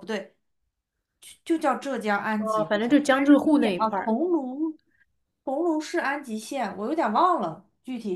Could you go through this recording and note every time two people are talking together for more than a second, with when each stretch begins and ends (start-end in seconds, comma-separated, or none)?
2.4-4.1